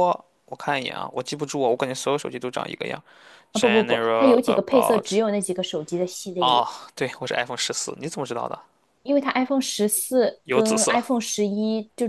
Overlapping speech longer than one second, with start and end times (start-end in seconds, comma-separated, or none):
3.5-5.1